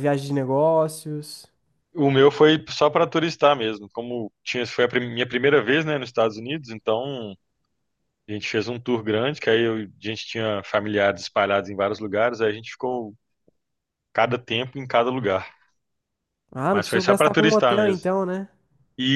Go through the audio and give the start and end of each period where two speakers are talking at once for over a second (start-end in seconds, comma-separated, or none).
16.7-18.1